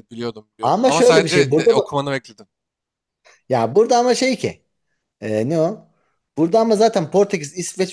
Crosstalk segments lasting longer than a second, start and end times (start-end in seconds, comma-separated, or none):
0.6-1.8